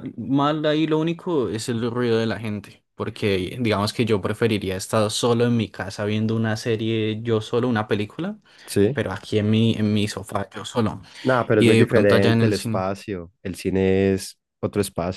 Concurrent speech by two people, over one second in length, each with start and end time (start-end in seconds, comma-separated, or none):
11.5-12.8